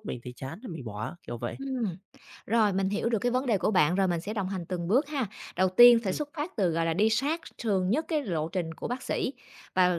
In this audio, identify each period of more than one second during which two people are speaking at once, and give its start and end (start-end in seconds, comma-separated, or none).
none